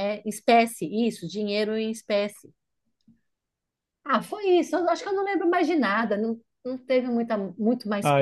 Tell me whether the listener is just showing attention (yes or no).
no